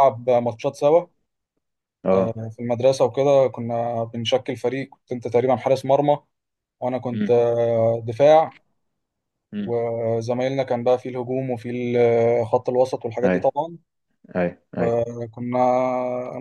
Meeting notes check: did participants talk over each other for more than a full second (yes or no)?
no